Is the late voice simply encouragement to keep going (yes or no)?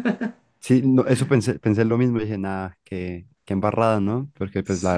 yes